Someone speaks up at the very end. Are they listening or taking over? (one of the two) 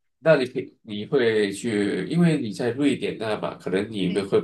listening